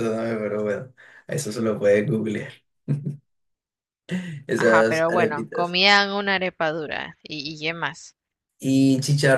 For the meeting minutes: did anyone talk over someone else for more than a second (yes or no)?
yes